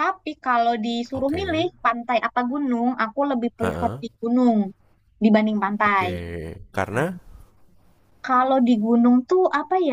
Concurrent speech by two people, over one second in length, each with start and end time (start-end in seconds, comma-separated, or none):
none